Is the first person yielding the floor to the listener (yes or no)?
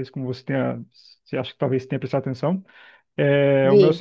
no